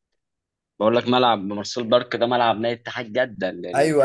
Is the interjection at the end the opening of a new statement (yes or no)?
yes